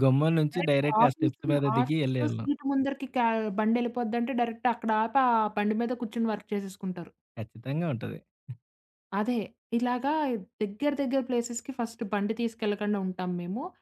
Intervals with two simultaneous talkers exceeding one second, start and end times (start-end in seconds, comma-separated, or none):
0.5-2.5